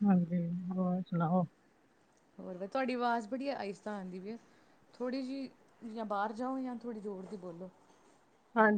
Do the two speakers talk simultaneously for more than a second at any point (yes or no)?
no